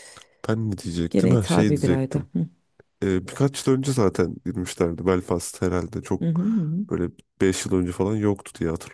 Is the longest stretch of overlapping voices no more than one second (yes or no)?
no